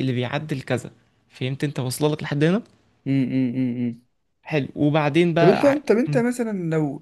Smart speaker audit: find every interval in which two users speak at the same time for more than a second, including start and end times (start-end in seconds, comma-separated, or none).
none